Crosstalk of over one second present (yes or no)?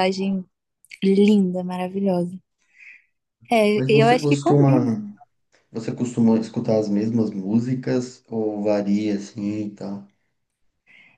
yes